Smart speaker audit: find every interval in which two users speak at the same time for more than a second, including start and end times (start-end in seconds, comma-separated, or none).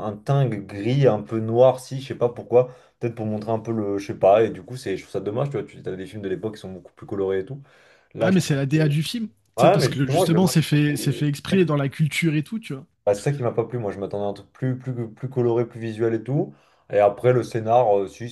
9.6-11.7